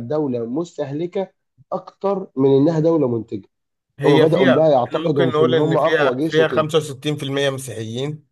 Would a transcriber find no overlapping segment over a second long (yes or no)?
no